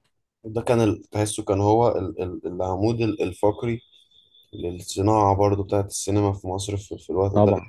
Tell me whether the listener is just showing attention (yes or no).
yes